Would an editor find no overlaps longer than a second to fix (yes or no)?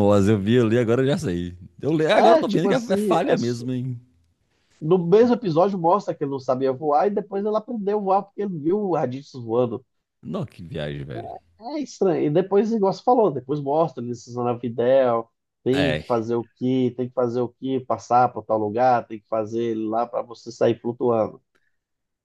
no